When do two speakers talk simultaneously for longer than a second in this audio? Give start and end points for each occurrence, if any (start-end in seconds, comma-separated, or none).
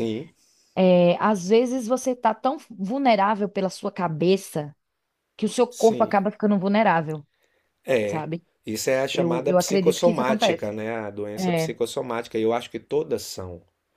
9.1-10.7